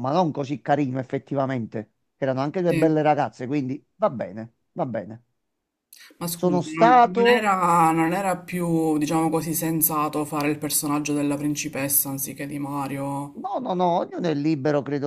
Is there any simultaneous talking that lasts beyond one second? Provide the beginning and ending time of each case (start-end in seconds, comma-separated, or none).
6.3-7.5